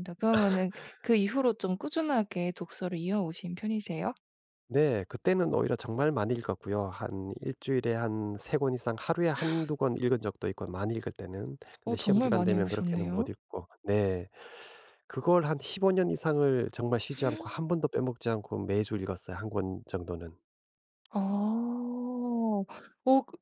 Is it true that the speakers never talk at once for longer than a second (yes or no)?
no